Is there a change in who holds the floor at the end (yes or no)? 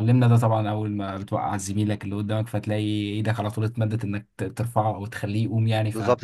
yes